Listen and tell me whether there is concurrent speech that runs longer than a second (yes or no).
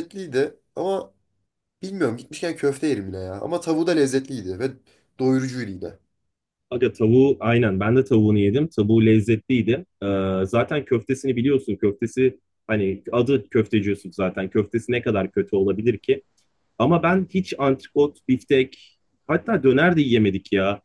no